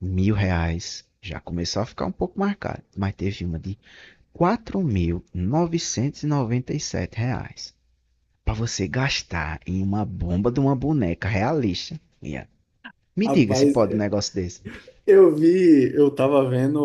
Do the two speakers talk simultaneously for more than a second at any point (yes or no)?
no